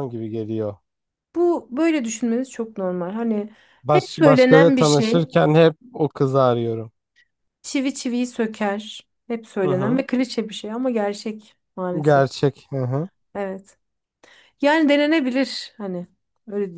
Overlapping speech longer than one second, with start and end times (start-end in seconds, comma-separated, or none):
3.8-5.1